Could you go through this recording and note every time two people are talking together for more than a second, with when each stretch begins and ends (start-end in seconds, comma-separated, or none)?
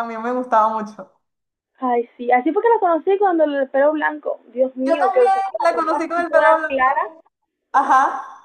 4.8-7.0